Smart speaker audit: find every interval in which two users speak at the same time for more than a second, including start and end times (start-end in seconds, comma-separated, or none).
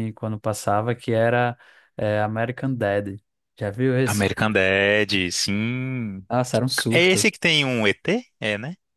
none